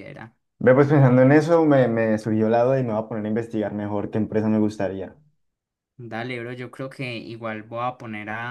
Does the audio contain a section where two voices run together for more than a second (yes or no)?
no